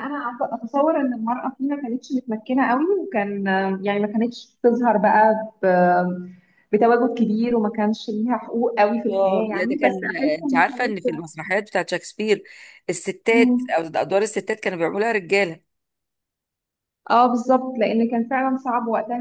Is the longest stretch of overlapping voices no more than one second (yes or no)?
no